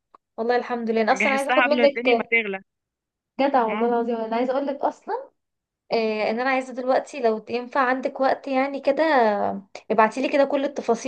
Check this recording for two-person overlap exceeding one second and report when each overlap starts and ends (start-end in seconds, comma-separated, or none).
1.1-2.3